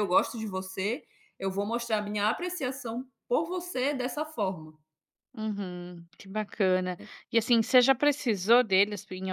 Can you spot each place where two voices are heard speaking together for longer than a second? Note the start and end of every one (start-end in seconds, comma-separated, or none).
none